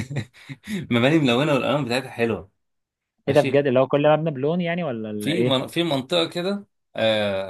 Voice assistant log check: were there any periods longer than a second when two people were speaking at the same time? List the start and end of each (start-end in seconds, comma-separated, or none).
none